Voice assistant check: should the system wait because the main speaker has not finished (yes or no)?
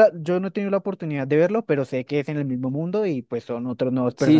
no